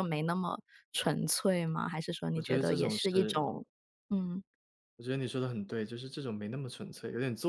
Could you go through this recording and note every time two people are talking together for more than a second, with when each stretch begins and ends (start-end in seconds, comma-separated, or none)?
2.3-3.5